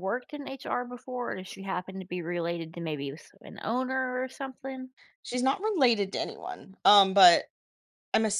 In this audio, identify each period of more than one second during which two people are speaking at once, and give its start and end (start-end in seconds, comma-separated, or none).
none